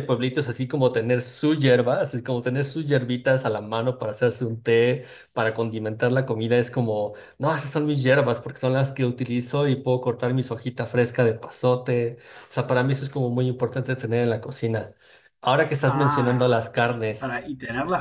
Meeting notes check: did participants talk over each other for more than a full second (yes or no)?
yes